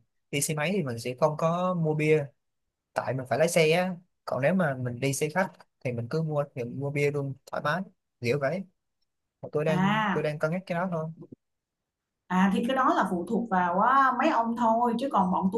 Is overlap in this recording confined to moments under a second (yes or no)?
yes